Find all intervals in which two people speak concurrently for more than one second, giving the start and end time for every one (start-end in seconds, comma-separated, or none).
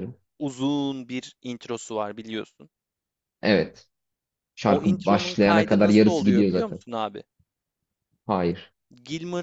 4.7-6.8